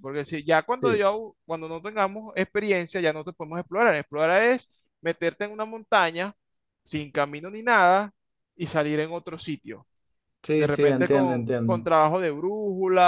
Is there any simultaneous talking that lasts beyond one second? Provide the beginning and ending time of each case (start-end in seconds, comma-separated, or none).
10.5-11.8